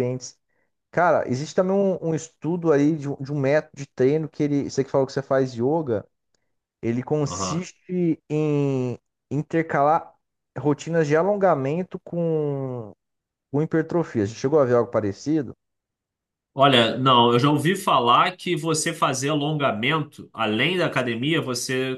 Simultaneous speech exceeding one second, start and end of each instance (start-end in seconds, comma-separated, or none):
none